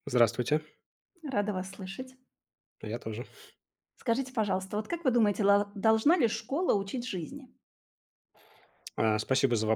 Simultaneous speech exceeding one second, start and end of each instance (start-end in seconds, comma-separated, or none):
none